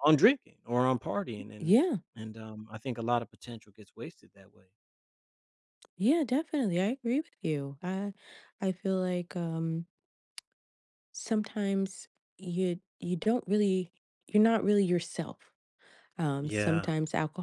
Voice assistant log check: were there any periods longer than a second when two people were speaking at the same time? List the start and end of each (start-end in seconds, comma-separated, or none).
none